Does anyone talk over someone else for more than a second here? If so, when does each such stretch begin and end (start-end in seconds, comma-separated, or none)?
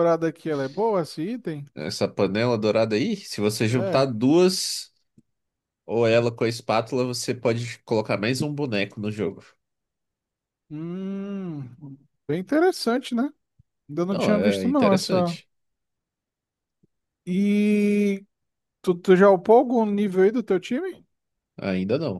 14.1-15.4